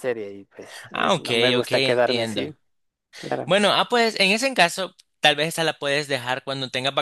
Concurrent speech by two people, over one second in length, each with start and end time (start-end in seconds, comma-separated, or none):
0.9-2.5